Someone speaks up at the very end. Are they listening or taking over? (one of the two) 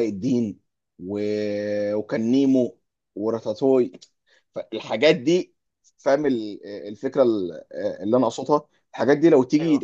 listening